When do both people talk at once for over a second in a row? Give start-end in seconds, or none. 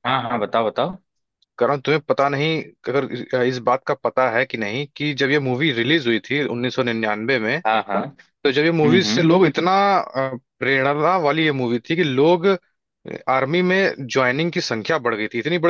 none